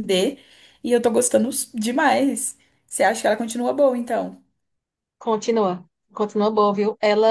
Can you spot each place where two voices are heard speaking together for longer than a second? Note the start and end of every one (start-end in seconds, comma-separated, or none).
none